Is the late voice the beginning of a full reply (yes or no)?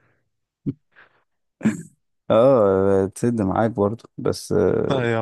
no